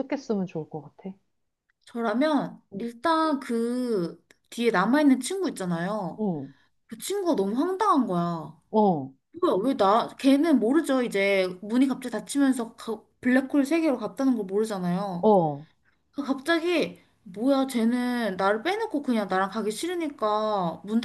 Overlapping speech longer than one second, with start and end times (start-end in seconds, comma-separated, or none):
none